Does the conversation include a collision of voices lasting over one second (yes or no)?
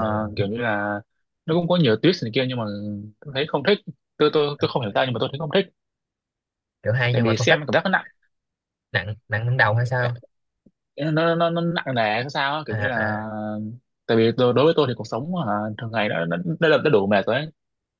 no